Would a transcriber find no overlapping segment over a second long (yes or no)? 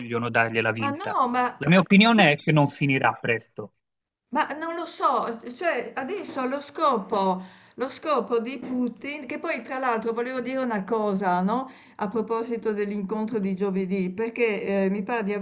yes